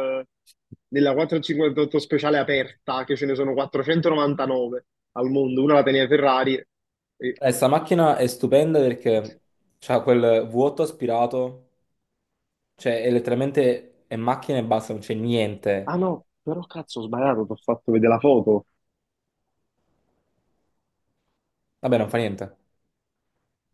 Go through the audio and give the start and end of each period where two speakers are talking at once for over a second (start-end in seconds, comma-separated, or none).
none